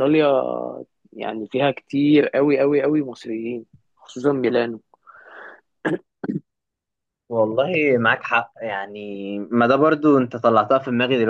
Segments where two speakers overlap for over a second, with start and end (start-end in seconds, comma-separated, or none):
none